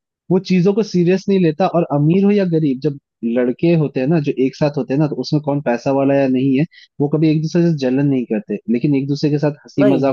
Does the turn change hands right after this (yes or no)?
no